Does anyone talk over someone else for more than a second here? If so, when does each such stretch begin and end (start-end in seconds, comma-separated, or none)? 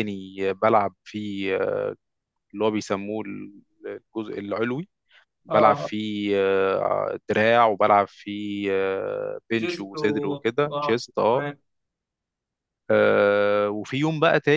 9.6-11.4